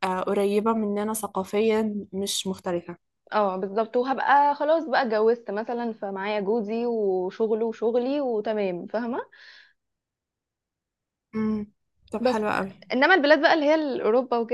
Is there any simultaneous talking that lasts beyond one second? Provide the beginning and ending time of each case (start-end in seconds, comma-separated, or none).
none